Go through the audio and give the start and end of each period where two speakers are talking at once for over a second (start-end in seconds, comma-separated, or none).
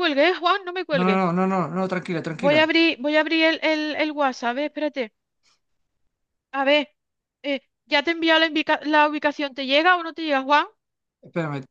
none